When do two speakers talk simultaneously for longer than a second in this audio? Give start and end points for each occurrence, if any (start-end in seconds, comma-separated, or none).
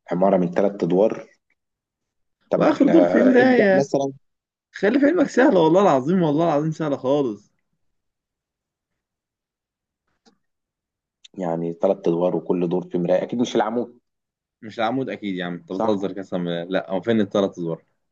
2.6-3.9